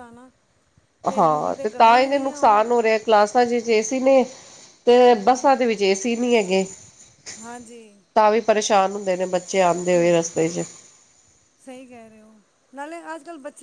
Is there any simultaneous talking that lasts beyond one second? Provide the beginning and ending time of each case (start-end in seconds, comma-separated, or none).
1.3-2.6